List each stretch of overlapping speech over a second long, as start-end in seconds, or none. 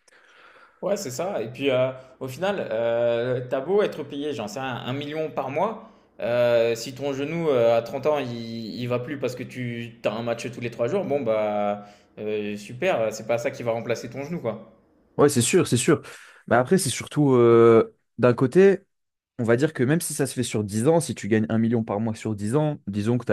none